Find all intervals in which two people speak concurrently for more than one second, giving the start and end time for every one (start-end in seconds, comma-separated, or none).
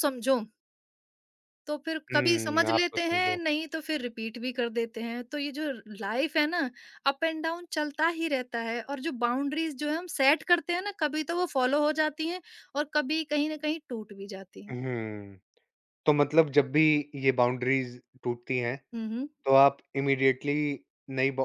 2.1-3.4